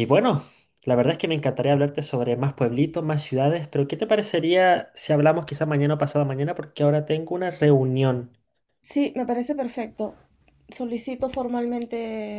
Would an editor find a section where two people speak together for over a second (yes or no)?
no